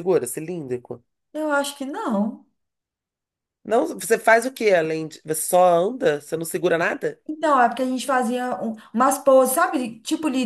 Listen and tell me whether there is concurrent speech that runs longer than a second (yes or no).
no